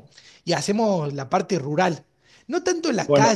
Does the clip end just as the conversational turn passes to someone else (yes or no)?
no